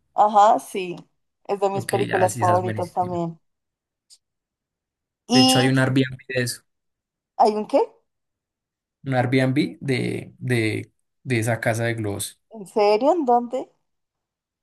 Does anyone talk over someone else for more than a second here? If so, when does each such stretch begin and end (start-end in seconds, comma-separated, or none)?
1.7-3.2